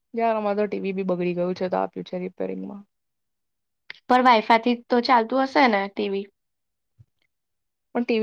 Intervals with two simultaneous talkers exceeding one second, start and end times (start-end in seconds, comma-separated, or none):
none